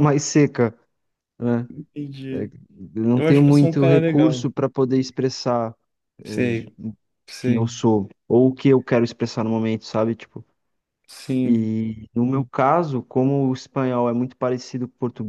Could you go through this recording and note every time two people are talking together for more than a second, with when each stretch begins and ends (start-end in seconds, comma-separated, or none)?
3.1-4.5